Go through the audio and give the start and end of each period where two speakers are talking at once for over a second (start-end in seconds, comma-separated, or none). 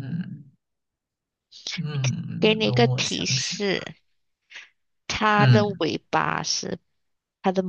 2.4-3.6